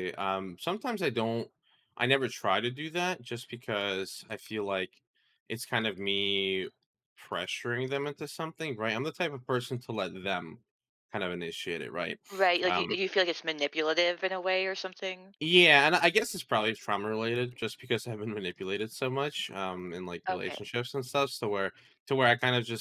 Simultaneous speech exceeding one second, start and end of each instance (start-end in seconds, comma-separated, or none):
none